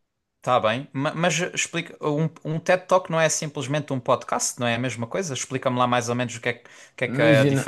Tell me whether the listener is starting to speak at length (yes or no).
yes